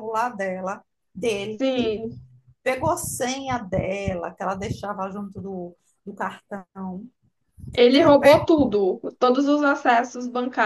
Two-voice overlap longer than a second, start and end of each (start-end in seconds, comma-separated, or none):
none